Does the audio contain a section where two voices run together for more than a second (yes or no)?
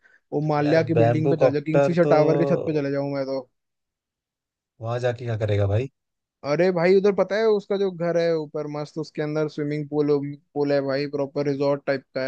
yes